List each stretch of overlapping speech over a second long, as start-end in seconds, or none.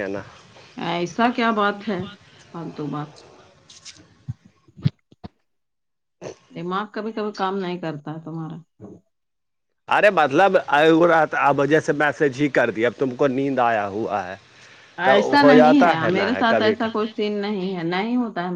15.1-17.0